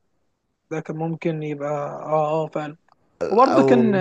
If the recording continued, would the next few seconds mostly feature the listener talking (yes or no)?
yes